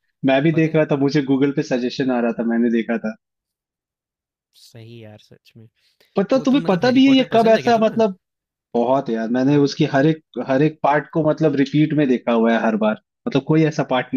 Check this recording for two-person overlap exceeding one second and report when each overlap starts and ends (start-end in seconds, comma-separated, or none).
6.3-8.0